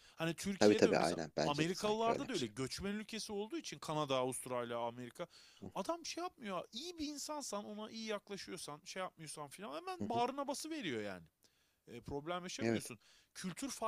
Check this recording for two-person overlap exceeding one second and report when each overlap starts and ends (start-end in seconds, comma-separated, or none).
0.6-2.5